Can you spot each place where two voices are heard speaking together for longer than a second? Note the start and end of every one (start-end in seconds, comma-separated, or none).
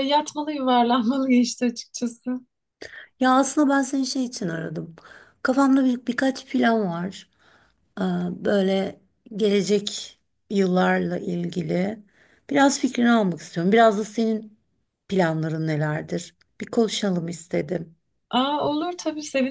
none